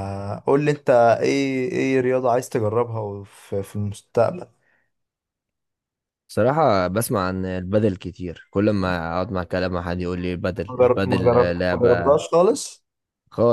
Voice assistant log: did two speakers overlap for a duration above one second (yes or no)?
yes